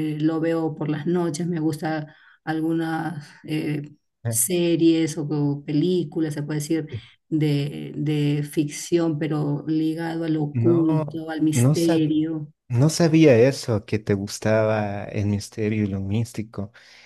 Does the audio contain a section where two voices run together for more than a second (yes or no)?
yes